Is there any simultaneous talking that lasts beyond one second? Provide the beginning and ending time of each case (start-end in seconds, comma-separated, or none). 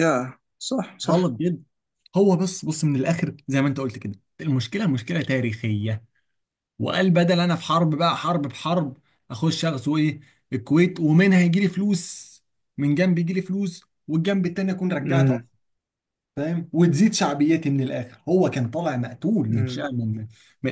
none